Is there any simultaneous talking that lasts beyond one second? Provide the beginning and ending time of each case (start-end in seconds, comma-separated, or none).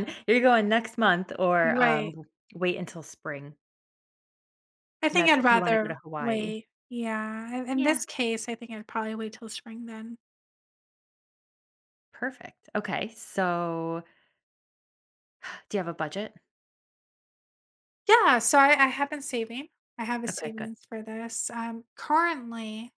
5.1-6.5